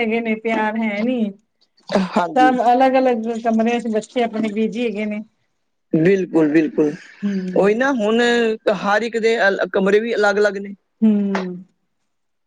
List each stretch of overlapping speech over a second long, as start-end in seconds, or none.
none